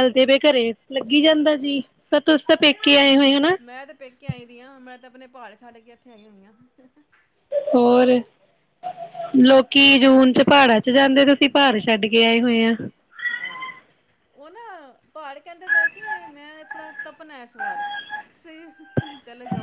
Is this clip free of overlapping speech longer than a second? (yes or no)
yes